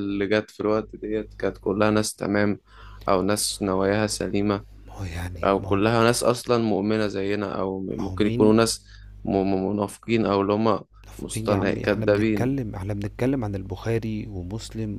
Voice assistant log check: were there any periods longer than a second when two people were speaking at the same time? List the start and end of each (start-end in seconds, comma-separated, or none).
11.2-12.5